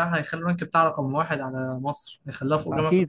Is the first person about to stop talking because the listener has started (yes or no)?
yes